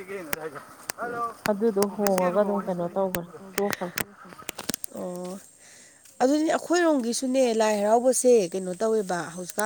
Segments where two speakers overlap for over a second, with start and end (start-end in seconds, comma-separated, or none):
none